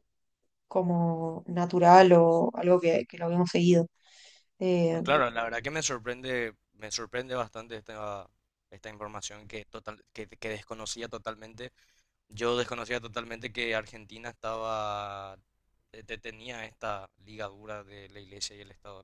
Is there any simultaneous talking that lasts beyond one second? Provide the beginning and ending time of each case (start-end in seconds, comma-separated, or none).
none